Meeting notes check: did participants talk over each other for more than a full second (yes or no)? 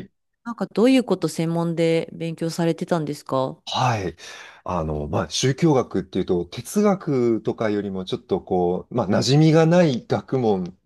no